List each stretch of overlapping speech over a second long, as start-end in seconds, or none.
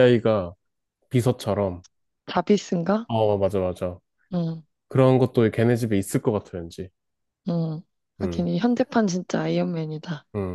none